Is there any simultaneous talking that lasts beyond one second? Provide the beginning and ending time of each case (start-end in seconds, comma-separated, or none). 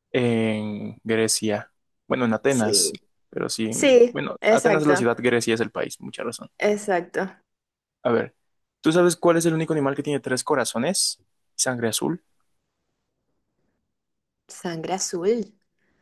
3.7-5.2